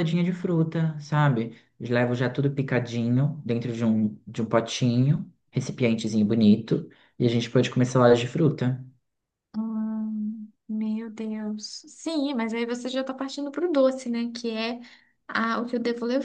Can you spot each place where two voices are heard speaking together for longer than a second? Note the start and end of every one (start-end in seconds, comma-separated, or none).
none